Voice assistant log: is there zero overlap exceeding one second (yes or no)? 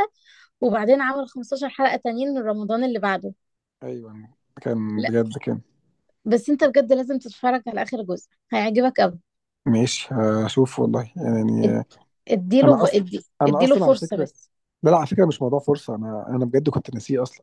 no